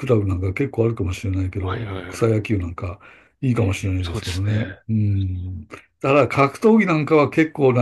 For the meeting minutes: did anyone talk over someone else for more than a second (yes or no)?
yes